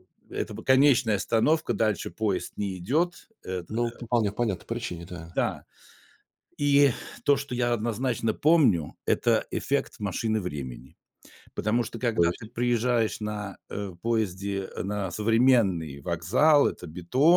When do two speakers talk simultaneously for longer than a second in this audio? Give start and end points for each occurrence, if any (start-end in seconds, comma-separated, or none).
none